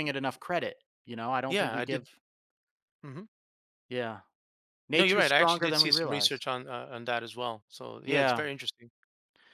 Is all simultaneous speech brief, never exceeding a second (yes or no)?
no